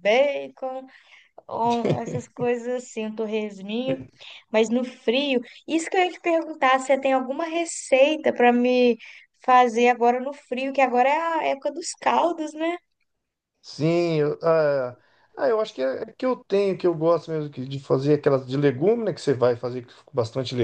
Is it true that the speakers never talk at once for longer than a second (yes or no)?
yes